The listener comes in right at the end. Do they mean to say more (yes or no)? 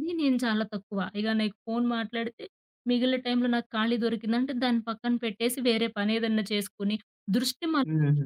no